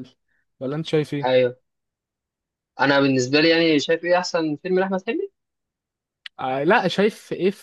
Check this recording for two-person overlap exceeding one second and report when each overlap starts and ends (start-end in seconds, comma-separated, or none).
none